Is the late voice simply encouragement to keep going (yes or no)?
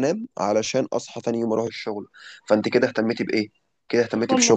yes